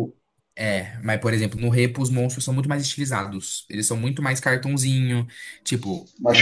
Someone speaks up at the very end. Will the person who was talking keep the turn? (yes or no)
yes